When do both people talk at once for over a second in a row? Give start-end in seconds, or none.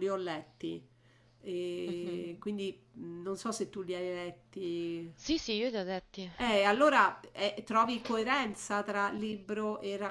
none